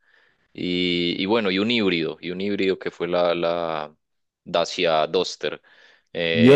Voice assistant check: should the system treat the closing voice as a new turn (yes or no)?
yes